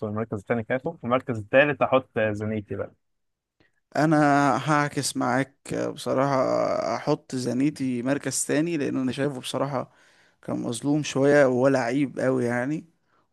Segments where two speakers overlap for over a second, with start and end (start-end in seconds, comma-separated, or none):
none